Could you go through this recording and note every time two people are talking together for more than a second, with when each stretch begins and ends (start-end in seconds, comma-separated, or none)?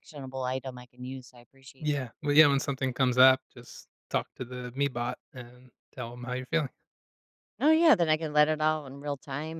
none